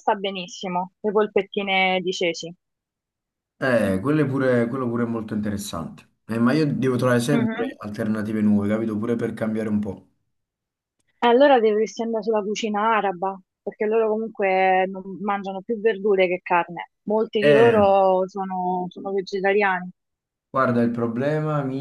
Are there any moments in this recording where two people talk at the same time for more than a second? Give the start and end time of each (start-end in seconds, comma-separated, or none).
none